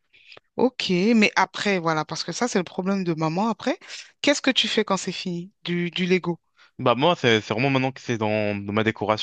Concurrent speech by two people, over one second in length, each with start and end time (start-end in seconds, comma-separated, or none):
none